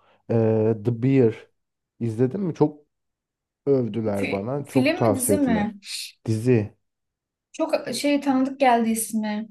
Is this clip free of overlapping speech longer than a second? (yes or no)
no